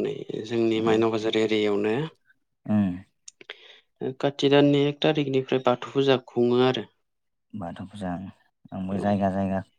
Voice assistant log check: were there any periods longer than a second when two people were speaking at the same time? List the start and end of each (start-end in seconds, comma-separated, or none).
none